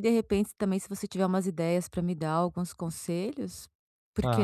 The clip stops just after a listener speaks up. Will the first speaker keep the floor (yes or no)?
no